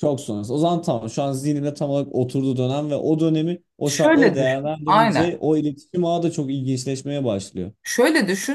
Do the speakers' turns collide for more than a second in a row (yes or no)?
yes